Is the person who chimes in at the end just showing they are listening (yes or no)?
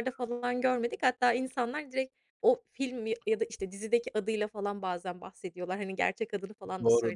no